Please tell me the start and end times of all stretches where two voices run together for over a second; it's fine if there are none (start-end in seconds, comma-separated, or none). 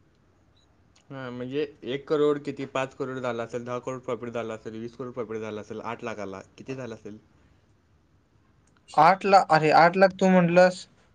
none